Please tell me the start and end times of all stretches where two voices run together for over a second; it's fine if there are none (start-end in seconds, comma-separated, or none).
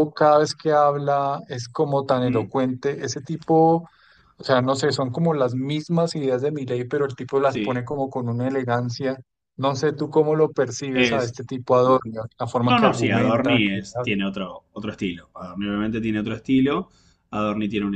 12.5-14.2